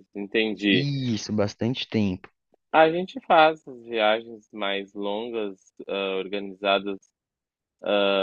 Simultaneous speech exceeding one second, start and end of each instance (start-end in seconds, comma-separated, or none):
none